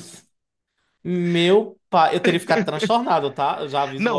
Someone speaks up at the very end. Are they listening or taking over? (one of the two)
taking over